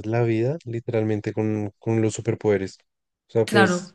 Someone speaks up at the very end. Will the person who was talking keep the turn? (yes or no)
yes